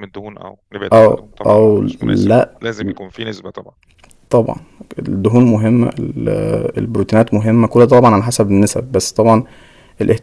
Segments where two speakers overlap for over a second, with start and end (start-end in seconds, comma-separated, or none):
0.9-2.5